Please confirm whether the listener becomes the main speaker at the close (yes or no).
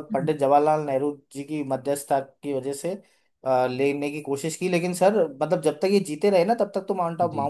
no